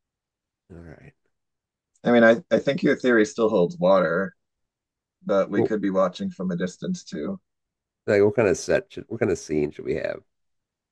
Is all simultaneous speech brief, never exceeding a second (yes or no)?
yes